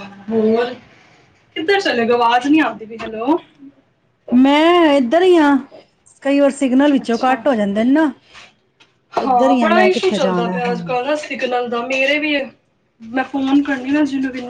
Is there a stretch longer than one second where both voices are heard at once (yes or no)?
yes